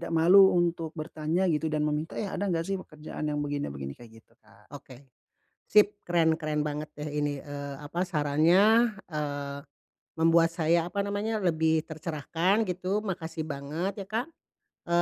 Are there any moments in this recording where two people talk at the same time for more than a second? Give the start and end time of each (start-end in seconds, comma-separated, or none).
none